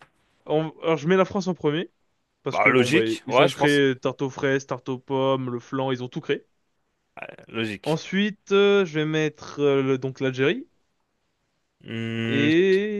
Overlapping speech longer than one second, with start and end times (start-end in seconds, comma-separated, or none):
2.5-3.8